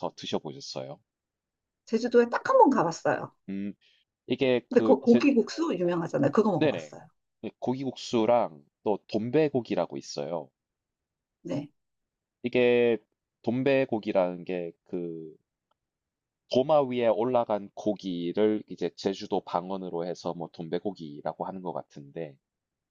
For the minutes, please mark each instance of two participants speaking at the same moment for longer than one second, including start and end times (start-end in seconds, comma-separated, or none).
none